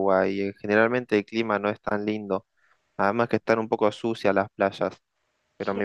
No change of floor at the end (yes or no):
yes